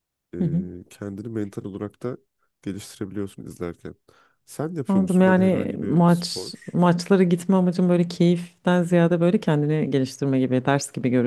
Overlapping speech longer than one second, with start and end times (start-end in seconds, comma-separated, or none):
4.9-6.8